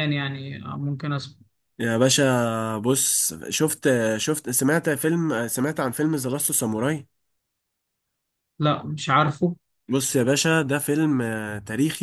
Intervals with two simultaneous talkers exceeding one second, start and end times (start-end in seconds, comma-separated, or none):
none